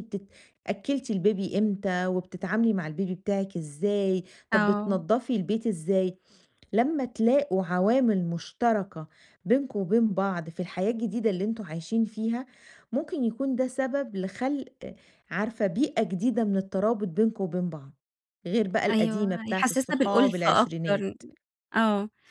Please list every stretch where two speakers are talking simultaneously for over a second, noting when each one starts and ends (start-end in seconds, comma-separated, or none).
18.9-21.0